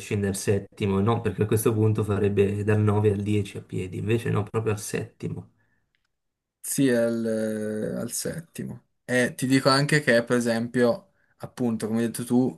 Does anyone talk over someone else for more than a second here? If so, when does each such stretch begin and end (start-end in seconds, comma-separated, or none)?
none